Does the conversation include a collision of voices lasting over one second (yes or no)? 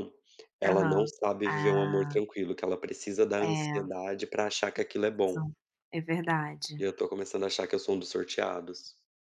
yes